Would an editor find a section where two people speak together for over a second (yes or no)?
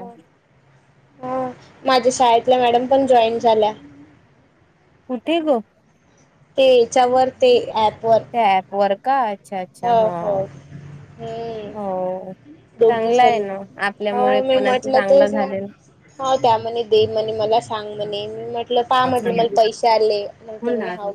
yes